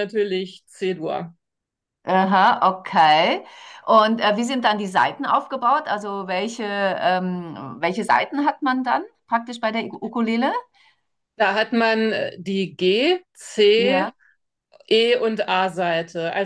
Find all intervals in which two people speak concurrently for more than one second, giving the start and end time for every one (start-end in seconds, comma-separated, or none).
none